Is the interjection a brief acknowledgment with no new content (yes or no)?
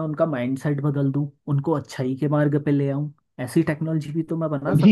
no